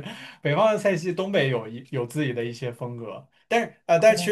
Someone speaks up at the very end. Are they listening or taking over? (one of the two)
listening